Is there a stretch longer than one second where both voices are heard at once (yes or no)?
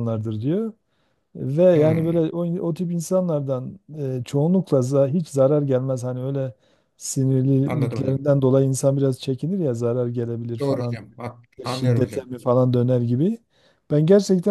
no